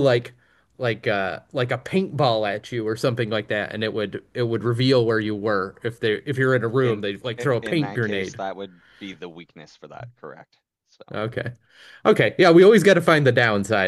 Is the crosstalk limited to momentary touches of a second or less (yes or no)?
no